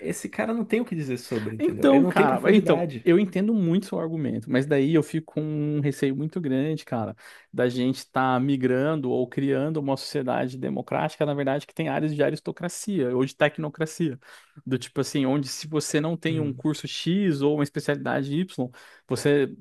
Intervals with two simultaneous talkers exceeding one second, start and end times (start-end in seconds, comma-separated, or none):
1.6-3.1